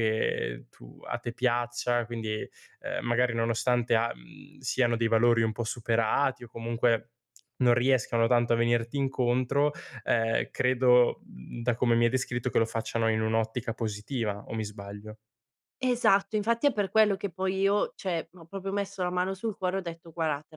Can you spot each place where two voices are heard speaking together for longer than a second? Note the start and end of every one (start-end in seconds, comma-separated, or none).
none